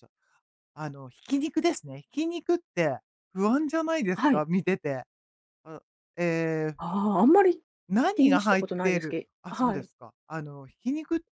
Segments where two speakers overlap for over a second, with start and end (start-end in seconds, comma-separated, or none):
8.2-9.9